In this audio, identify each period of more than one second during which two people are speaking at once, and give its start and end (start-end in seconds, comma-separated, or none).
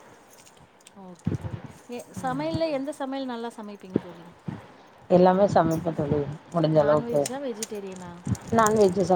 6.8-8.1